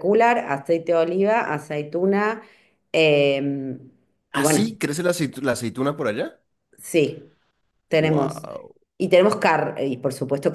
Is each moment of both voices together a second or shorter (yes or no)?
yes